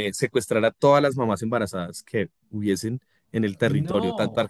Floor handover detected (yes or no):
no